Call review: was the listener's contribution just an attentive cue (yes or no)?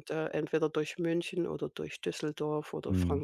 no